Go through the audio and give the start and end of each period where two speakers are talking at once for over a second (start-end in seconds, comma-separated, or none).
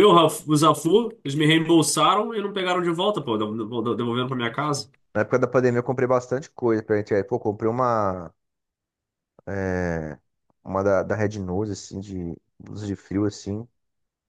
none